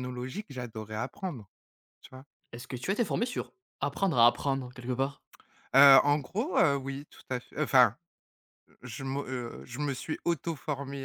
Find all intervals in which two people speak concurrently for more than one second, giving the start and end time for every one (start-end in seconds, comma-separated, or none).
none